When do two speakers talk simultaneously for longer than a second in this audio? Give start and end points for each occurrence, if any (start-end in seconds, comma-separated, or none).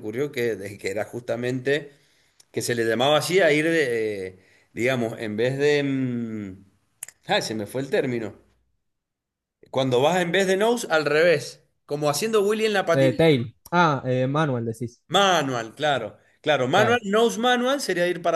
none